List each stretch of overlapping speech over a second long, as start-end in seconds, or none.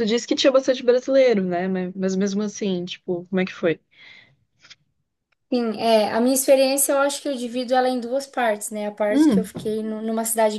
none